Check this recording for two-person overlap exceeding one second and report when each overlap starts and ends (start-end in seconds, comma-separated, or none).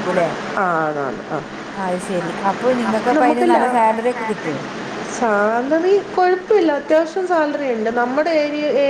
none